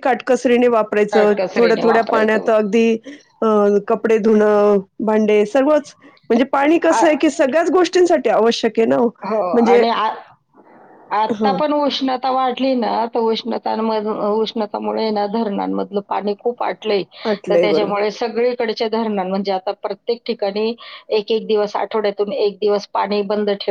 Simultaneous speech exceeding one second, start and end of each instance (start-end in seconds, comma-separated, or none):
1.1-2.5